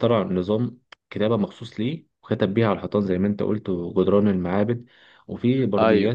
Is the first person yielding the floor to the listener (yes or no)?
no